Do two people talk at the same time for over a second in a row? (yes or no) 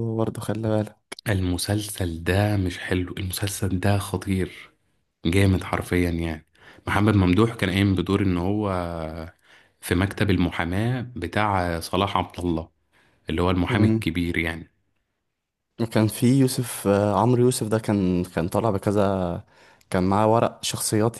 no